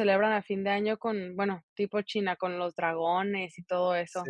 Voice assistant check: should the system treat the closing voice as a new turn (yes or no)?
yes